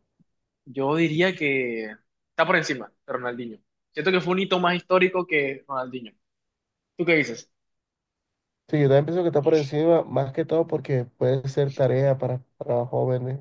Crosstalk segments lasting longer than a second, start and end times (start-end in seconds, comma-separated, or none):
none